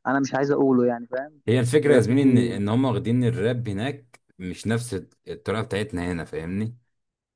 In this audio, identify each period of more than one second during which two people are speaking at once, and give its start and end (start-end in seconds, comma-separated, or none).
none